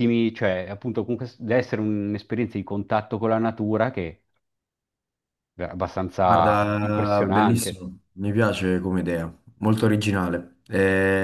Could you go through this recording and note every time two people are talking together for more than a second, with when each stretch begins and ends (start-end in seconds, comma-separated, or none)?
6.2-7.8